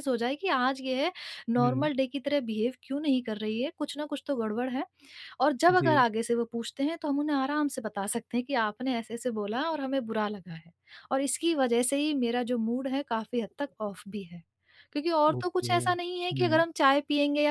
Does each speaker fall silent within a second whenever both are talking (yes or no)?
no